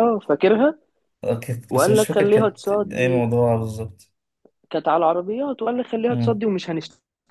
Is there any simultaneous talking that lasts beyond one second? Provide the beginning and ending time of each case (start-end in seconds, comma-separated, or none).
1.7-3.3